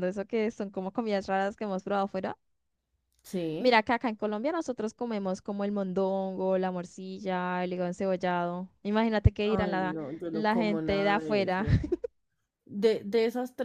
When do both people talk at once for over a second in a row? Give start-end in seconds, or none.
9.4-11.7